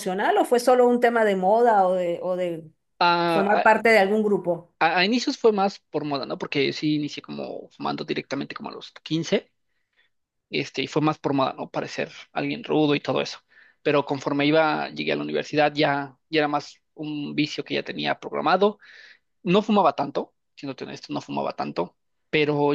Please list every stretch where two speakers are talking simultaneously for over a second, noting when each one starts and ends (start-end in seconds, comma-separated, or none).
none